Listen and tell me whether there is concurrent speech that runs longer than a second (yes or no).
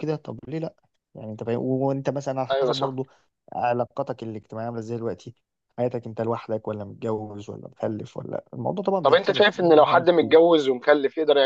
yes